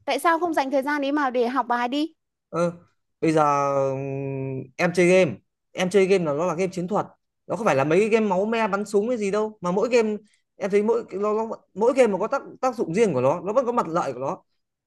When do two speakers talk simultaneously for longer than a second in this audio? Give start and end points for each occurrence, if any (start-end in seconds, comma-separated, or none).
none